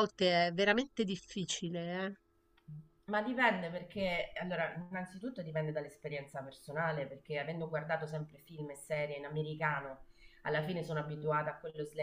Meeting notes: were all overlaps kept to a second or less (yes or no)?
yes